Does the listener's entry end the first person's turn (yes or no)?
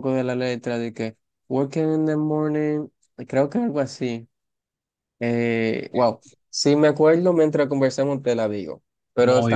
no